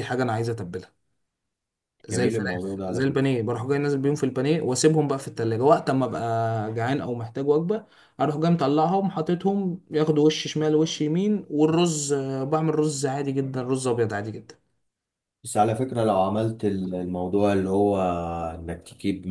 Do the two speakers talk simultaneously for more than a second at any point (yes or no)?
yes